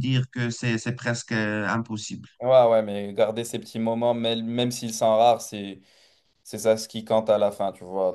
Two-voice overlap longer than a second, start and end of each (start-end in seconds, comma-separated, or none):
none